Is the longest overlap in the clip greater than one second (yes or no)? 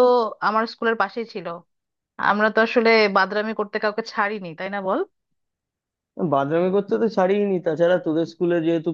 no